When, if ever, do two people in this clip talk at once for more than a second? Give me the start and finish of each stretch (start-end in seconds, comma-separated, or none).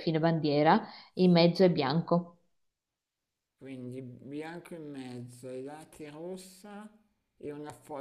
none